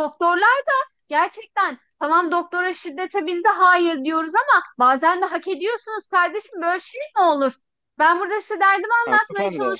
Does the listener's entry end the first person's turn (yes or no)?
no